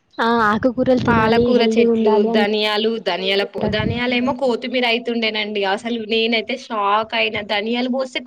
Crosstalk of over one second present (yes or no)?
no